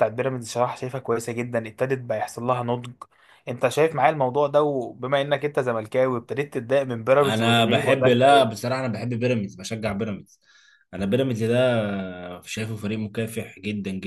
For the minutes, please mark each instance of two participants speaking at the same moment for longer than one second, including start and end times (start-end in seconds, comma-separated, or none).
7.2-8.6